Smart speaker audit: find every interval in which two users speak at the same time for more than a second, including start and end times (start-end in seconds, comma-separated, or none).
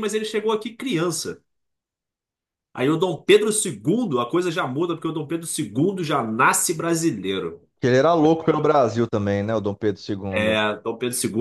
none